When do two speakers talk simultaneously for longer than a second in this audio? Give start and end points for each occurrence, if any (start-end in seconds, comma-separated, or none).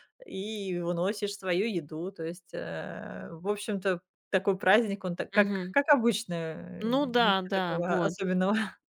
6.8-8.1